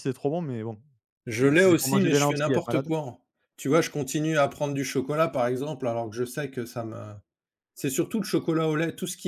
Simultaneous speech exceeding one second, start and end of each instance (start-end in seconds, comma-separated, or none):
1.4-2.9